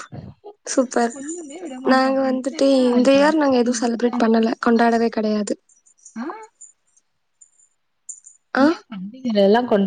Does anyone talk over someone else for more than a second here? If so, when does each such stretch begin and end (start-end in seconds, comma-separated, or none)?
1.9-5.0